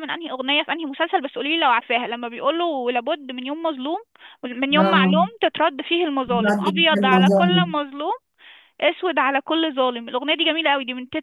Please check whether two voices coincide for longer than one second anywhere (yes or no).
yes